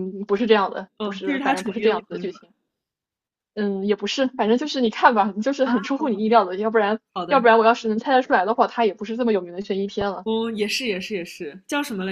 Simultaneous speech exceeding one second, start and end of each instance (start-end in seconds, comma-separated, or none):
1.0-2.3